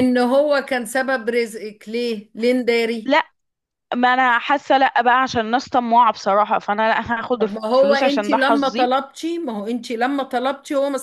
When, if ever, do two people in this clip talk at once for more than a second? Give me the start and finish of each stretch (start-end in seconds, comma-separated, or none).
7.4-8.9